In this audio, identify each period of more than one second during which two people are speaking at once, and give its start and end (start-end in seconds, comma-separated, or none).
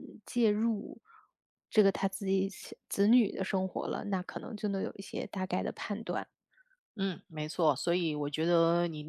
none